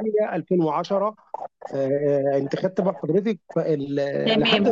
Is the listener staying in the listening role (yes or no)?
no